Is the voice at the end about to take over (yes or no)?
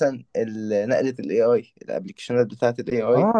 yes